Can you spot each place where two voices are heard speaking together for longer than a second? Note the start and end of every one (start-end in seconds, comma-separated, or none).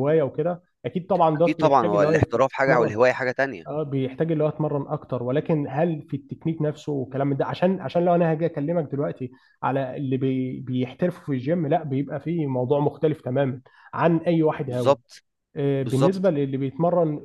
1.4-2.9